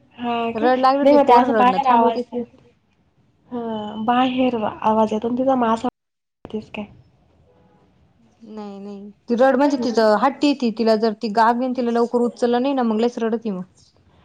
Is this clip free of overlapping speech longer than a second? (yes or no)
no